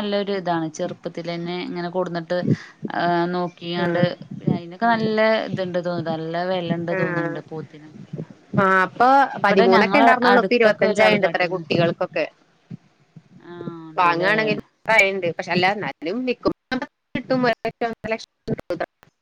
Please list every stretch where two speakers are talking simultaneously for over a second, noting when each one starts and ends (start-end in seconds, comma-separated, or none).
10.3-11.6